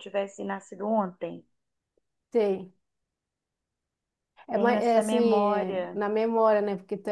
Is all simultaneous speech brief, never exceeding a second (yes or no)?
no